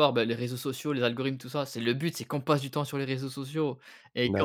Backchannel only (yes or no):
yes